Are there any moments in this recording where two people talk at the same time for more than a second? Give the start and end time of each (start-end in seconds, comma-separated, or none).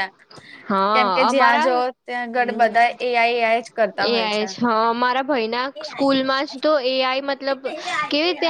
0.9-2.7